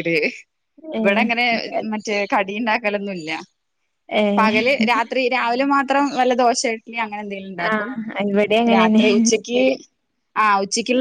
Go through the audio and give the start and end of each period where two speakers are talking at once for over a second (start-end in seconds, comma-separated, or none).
none